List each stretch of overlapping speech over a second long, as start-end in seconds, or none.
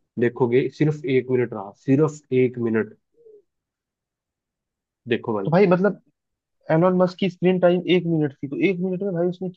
none